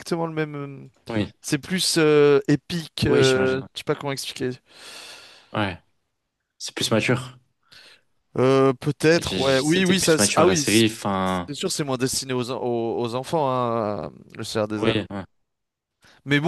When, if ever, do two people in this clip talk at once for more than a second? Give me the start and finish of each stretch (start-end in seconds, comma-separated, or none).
9.1-10.8